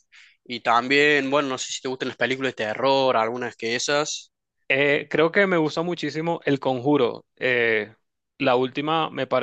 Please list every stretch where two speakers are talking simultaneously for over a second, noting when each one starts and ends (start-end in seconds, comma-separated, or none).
none